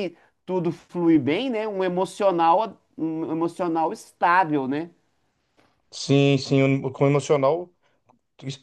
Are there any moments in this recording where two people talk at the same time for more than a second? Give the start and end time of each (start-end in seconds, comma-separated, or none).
none